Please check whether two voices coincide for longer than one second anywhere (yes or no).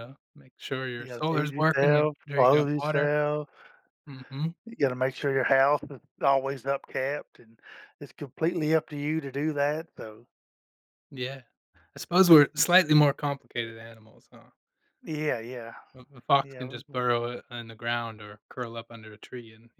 yes